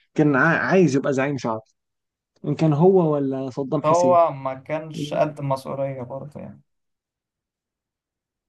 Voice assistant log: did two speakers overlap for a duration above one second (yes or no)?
no